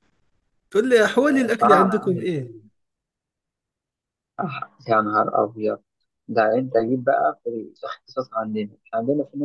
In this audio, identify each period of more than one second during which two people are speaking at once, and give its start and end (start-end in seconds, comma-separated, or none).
1.2-2.5